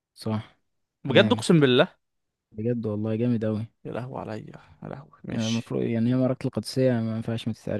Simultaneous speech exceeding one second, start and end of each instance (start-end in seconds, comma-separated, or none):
none